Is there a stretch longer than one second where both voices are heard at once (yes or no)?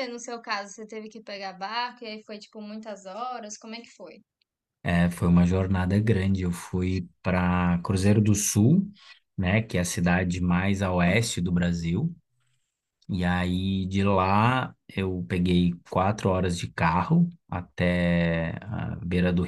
no